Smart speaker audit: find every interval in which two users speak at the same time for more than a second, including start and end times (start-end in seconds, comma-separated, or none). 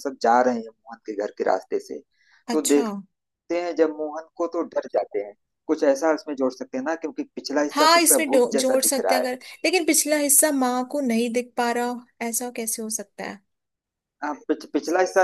7.7-9.3